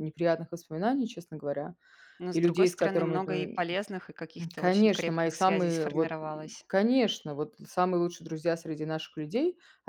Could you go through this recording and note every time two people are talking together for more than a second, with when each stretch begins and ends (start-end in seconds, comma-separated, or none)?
2.3-3.6, 4.4-6.2